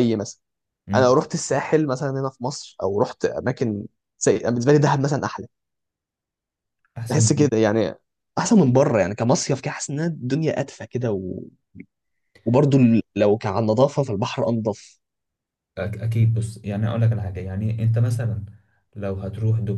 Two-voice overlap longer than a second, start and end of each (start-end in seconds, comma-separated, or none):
none